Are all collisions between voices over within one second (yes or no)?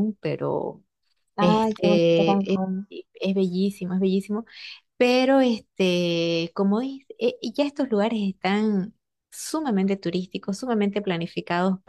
no